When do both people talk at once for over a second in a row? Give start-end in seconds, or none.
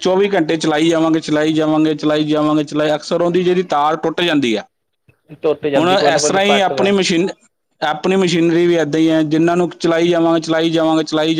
5.4-6.9